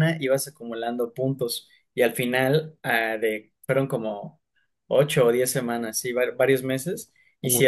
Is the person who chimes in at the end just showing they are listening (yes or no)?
yes